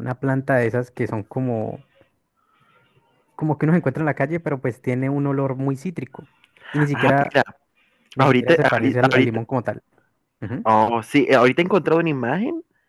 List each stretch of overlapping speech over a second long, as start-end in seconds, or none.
8.2-9.4